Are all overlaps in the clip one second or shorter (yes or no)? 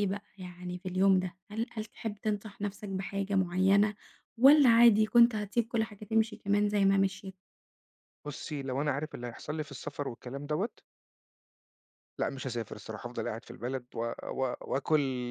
yes